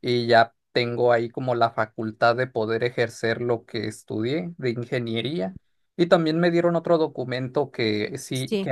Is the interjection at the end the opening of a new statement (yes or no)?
no